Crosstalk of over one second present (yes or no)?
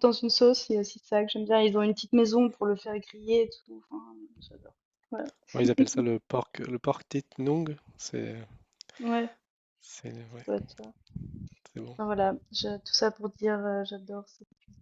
no